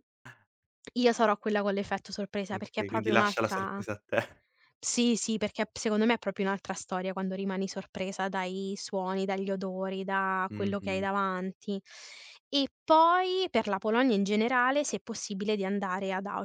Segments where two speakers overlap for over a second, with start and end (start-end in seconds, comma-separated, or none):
2.5-3.8